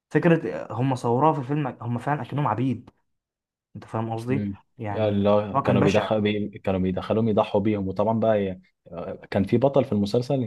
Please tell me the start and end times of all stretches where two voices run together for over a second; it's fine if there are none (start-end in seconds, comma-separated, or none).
4.3-6.1